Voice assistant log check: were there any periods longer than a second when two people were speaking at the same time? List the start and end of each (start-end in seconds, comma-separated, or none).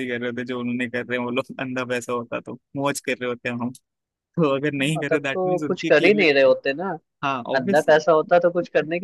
4.8-6.5